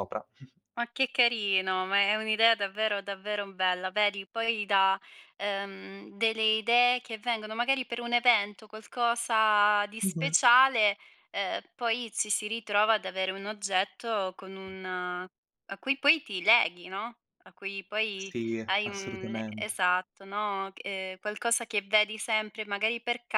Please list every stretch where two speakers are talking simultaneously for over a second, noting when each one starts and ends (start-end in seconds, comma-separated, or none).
18.1-19.8